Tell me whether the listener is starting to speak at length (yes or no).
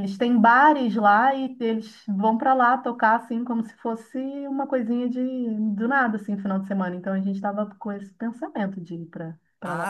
yes